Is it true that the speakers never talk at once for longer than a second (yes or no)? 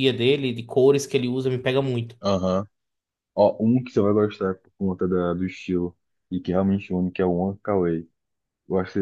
yes